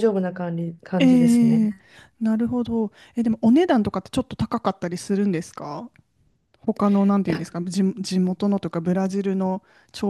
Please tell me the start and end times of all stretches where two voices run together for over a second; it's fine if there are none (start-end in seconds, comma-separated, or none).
none